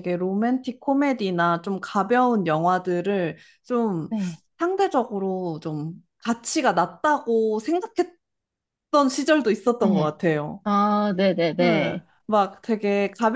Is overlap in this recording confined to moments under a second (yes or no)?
yes